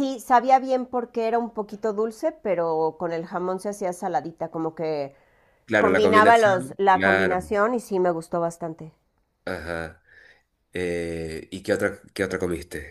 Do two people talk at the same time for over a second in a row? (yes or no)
yes